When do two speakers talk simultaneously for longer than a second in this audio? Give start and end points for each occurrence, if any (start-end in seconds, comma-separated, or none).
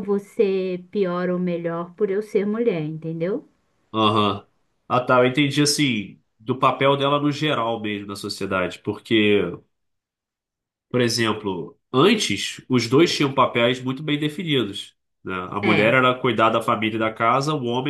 none